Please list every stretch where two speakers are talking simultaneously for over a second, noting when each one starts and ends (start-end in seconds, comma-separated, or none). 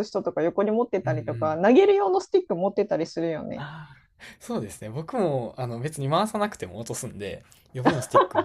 none